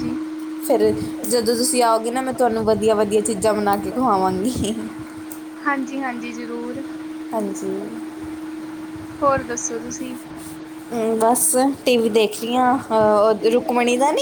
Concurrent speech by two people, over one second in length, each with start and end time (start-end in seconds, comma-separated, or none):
none